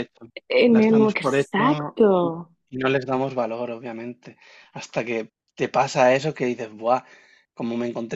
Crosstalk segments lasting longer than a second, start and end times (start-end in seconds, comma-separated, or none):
0.7-2.3